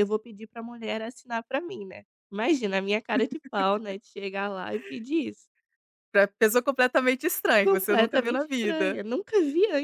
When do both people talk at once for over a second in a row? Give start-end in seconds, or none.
7.6-9.0